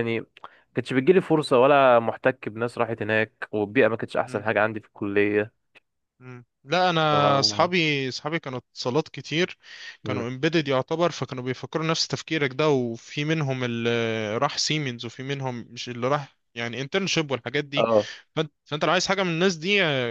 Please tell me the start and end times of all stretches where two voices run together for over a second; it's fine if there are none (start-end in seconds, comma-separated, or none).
none